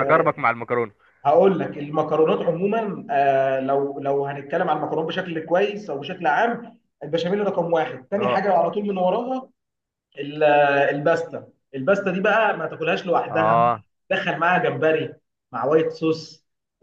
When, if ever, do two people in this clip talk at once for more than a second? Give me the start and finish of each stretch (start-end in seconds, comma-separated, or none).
none